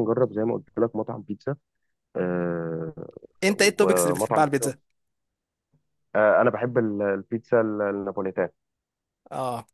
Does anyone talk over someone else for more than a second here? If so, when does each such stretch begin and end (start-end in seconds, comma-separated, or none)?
3.5-4.7